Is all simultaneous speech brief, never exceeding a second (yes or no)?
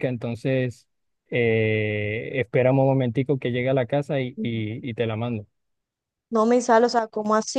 yes